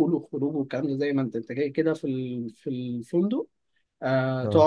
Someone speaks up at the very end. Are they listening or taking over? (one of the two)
listening